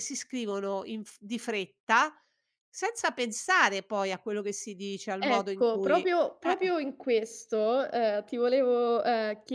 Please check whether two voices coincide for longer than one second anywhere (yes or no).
yes